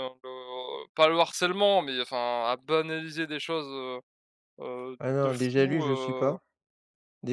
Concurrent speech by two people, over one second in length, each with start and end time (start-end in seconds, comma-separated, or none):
5.0-6.4